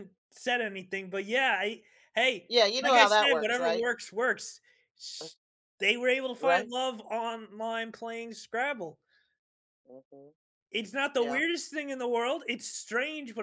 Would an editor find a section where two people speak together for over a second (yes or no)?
yes